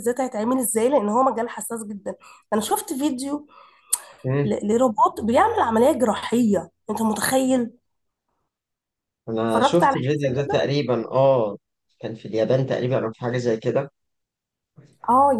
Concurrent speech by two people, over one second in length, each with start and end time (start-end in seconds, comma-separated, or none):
9.5-10.7